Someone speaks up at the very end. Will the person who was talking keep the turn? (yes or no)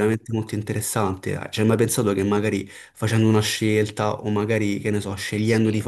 yes